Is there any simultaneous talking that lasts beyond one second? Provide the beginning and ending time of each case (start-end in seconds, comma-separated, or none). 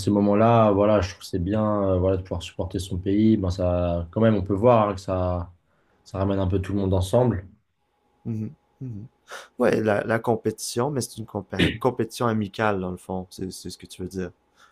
none